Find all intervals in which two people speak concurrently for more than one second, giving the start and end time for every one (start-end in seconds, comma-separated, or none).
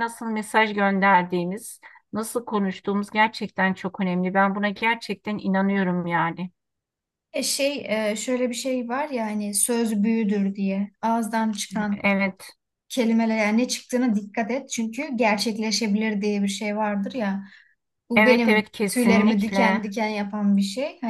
18.2-19.9